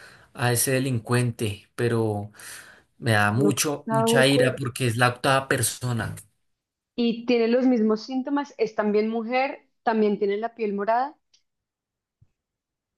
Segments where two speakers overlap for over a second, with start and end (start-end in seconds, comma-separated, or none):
3.3-4.6